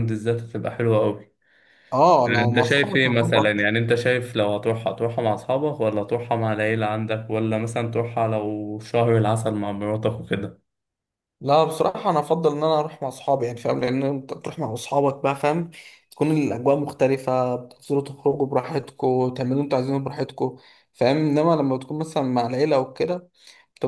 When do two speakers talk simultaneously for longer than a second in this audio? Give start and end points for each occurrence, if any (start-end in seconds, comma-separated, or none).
2.3-3.6